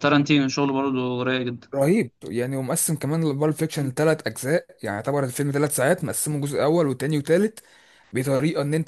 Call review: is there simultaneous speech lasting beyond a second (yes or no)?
no